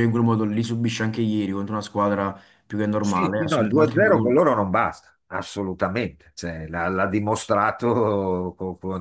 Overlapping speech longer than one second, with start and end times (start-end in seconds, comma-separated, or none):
3.0-4.4